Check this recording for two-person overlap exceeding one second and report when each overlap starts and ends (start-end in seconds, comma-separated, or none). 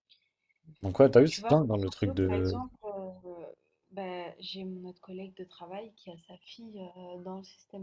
1.3-2.6